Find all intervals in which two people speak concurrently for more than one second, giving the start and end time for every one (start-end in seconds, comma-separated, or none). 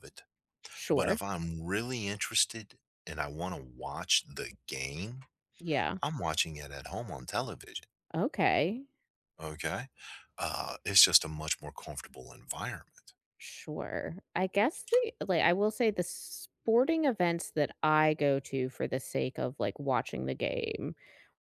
none